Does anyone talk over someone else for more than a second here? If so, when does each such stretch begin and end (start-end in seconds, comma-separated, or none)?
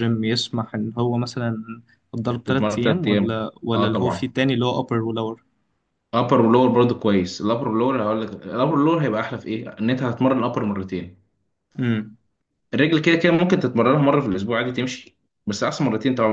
2.4-4.3